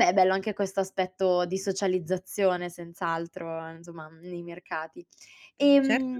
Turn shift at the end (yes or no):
no